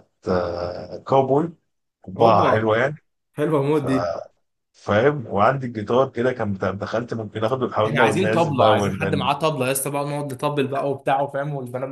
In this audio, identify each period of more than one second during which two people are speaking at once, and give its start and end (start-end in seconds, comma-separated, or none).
7.8-9.3